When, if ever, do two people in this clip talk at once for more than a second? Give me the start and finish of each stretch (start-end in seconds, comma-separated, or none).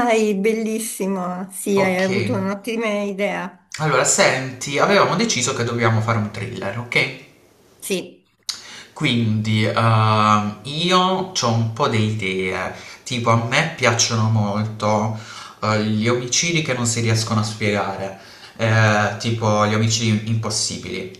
none